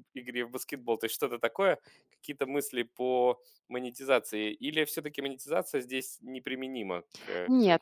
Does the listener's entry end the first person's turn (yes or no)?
yes